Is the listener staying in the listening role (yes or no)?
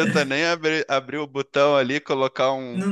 yes